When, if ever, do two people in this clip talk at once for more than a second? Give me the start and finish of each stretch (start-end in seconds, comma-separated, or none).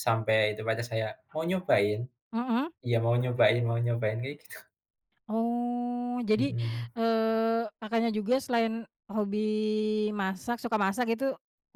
none